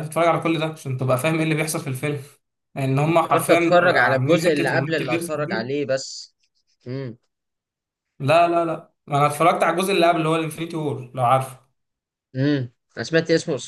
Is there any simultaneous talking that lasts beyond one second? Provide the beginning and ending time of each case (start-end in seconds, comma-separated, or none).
3.0-5.8